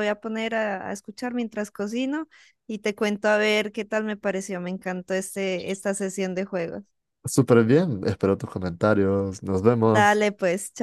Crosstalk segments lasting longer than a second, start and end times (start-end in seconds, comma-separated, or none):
none